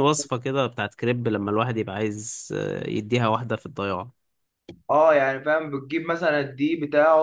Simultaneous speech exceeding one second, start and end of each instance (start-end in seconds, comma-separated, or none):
none